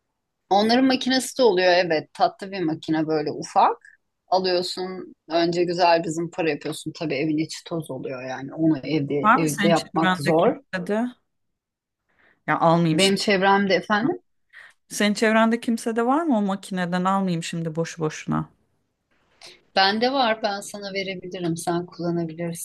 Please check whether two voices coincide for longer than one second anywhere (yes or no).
yes